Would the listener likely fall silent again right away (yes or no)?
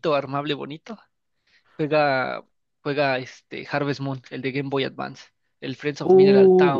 no